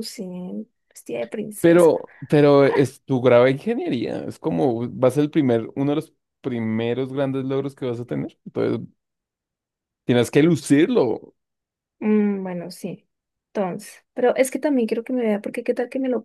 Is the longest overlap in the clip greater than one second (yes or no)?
no